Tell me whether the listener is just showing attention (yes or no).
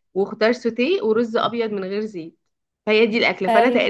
no